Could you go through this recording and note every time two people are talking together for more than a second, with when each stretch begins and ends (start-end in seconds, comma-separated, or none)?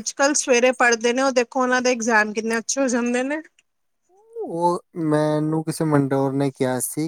none